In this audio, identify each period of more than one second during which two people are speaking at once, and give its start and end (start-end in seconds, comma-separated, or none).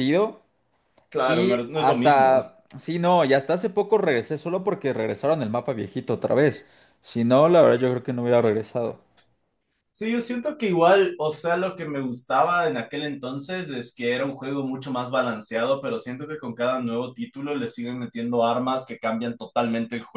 1.2-2.5